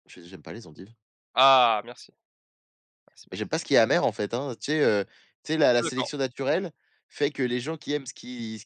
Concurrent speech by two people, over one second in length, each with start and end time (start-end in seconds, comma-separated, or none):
none